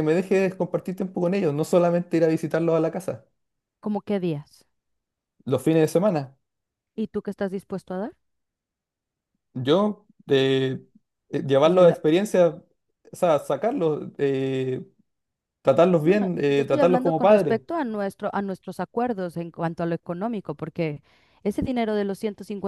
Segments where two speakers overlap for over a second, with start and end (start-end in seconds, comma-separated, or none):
16.0-17.6